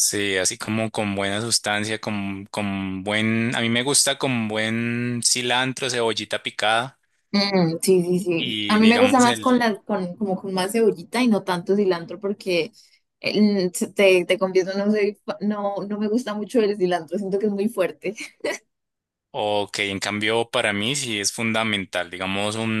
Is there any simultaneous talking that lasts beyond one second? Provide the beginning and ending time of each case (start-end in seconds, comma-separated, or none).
8.4-9.7